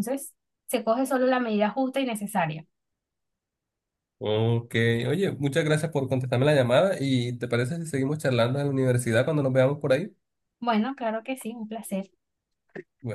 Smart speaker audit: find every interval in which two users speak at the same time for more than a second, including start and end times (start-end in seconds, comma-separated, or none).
none